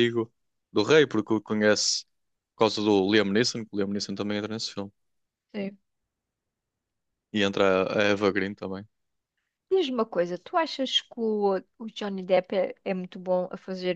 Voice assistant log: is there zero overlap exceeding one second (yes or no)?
yes